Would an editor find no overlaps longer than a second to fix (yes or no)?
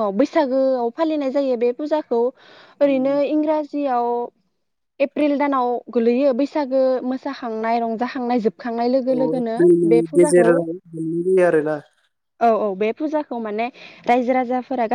yes